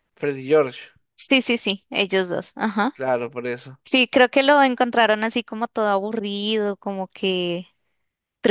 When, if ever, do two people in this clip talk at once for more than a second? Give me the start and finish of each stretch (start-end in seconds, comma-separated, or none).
none